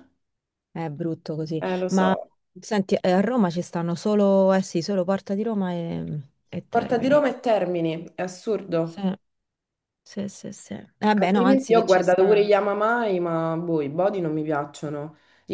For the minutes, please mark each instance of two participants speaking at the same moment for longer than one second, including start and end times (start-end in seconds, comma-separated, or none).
11.2-12.5